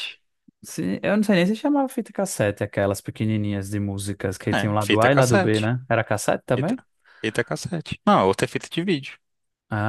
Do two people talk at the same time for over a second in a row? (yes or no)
yes